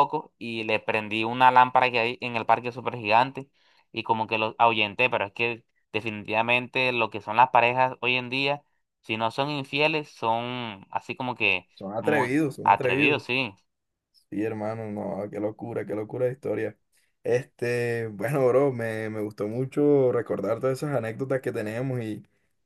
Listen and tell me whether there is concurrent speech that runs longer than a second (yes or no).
yes